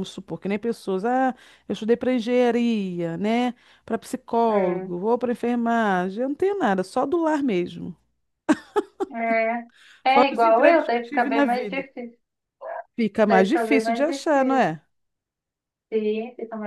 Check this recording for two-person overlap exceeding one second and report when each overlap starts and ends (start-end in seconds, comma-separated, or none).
10.1-11.8, 13.2-14.7